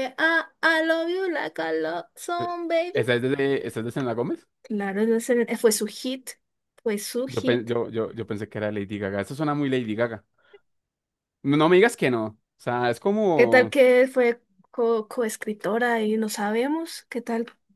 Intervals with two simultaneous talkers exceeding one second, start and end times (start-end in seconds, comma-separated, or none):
none